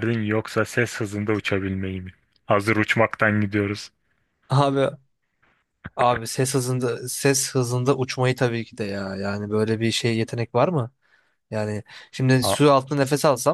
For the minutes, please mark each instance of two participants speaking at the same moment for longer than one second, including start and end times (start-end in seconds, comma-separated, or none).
none